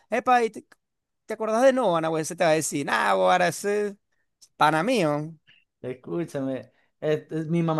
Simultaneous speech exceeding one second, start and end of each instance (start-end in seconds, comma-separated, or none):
none